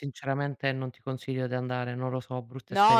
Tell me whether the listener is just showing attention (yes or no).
no